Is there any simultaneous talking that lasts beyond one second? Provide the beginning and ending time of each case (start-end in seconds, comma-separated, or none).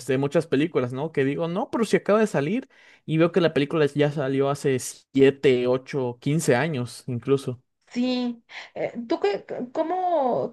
none